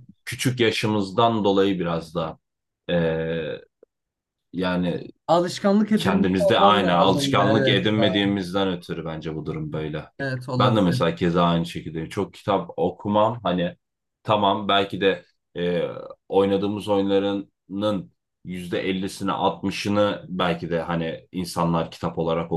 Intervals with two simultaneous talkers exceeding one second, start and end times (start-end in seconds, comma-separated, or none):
6.0-8.3